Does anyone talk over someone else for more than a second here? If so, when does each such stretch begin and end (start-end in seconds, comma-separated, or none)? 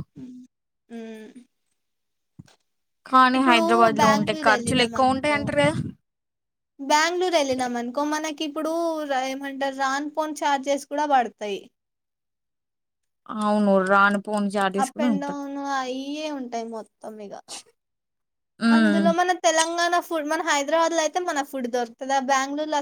4.0-5.4